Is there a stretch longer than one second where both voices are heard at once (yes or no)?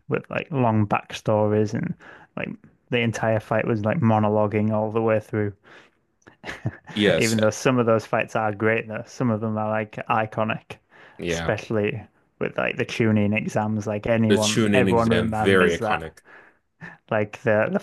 yes